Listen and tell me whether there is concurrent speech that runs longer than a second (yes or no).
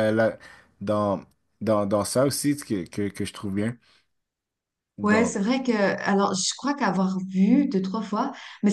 no